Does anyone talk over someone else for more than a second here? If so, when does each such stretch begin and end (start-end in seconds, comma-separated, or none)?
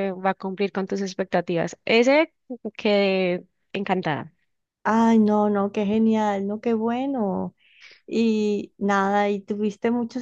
none